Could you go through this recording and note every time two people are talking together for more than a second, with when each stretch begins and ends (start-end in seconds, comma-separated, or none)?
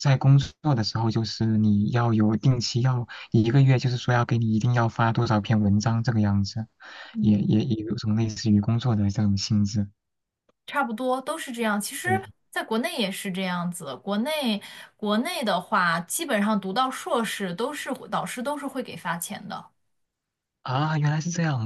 none